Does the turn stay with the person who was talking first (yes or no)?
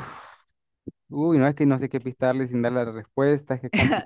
no